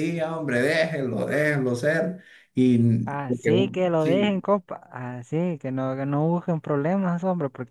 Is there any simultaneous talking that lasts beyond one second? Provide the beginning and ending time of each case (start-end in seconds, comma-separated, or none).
3.1-4.3